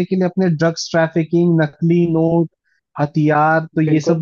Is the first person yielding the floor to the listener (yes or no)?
no